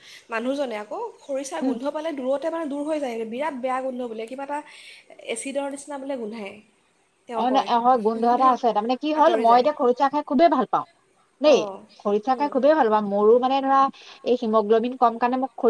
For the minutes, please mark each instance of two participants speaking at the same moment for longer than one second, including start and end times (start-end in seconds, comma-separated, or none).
none